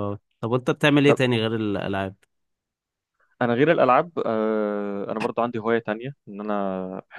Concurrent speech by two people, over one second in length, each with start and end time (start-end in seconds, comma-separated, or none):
none